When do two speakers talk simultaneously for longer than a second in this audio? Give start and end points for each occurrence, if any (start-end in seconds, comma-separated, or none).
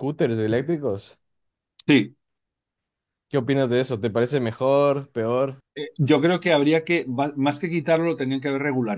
none